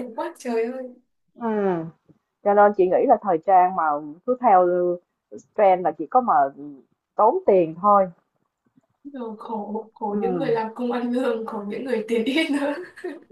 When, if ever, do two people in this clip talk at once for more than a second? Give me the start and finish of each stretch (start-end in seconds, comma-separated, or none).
none